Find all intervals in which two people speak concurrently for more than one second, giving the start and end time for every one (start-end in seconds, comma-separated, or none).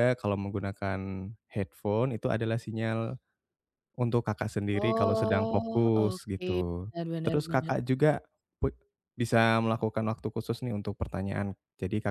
4.7-6.5